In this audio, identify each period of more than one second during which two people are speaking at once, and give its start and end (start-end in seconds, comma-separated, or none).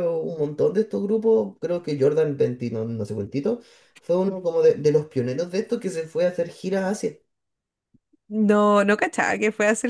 none